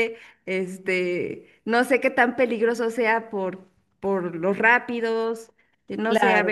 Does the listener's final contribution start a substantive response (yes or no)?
yes